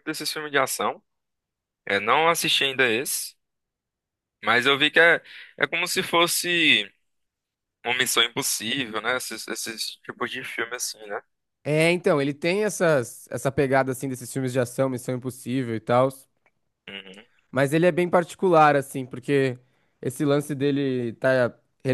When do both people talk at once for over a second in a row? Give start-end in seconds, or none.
none